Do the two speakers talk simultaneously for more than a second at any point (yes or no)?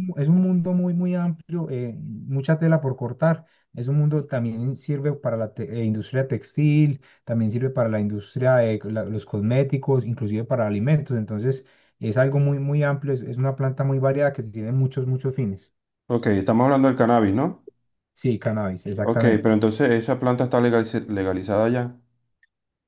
no